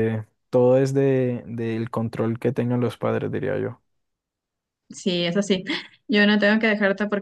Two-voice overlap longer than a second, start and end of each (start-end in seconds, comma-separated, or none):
none